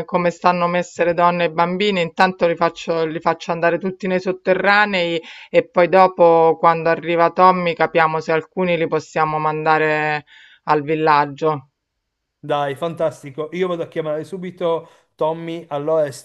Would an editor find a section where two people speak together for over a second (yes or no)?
no